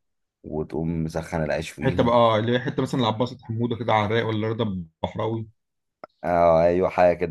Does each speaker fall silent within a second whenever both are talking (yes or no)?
yes